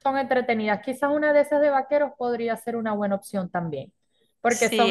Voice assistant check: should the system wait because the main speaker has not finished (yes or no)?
yes